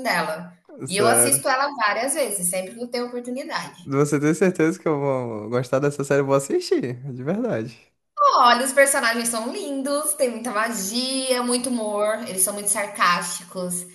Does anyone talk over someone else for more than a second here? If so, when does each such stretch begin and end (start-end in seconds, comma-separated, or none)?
none